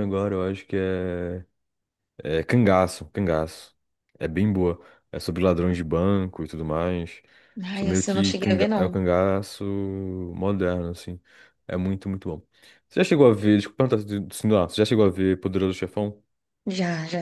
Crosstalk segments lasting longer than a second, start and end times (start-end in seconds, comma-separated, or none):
7.7-9.0